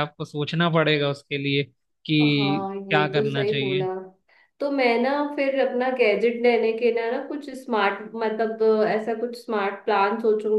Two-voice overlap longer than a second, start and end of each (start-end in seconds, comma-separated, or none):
2.2-3.9